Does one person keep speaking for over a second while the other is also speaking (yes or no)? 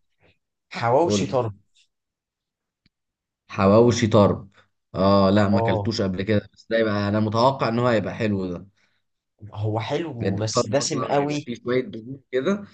yes